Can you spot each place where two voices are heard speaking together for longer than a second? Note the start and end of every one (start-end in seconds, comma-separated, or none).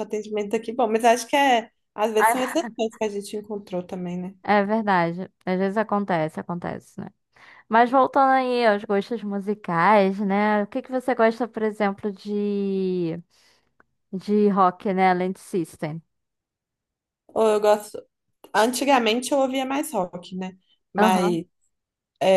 none